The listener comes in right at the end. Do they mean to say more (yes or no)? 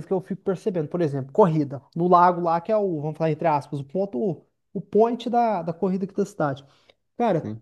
no